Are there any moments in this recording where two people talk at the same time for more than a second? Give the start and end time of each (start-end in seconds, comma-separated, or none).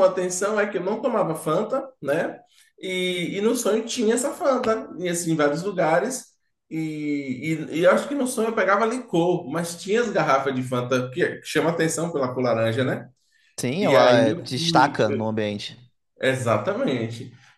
13.8-15.3